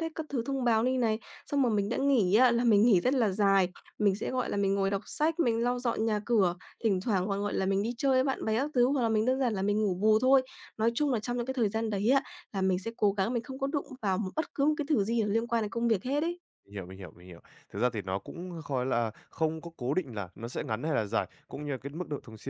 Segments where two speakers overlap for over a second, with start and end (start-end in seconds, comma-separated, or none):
none